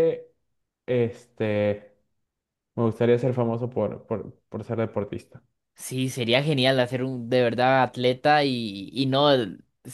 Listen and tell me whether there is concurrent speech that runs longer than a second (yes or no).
no